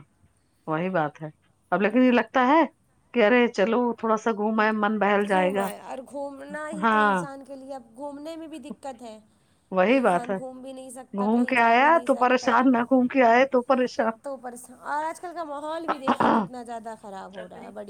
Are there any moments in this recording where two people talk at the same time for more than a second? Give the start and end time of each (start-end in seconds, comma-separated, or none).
11.2-12.6